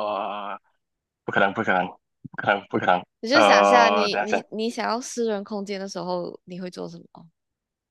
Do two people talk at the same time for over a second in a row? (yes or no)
yes